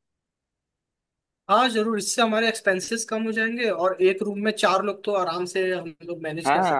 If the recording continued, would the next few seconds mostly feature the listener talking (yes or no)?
yes